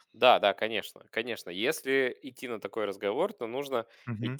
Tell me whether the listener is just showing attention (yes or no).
yes